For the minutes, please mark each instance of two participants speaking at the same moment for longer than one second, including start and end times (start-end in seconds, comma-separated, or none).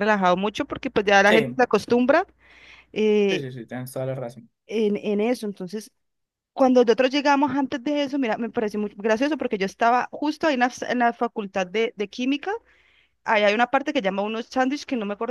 none